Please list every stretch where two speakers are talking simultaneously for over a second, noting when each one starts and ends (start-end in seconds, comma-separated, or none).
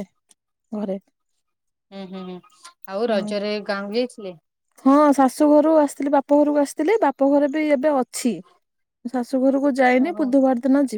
none